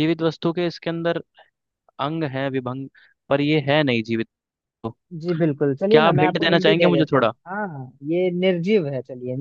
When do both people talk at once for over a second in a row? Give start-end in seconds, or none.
5.9-7.3